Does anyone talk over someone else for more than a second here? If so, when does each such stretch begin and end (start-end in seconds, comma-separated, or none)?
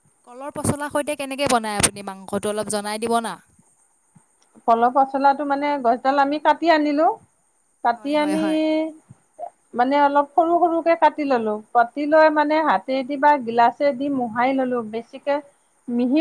none